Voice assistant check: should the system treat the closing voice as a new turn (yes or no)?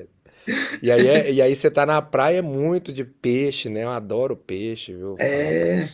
yes